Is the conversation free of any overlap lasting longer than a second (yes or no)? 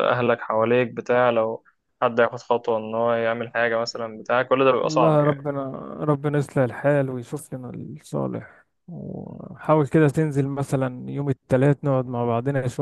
yes